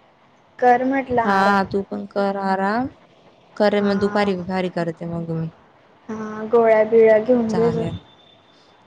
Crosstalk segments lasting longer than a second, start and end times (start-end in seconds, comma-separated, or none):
none